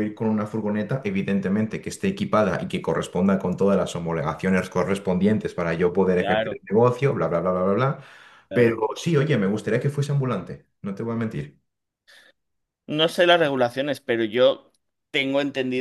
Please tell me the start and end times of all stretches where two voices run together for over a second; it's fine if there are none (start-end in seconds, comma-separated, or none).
none